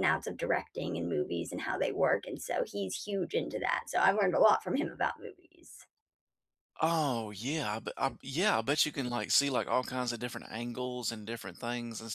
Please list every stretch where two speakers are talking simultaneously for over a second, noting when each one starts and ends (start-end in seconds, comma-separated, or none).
none